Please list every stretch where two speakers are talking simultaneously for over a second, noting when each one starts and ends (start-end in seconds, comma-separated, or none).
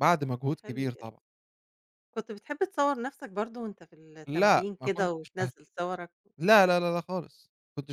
4.3-5.5